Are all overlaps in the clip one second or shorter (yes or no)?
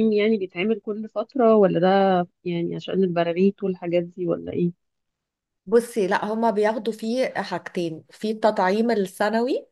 yes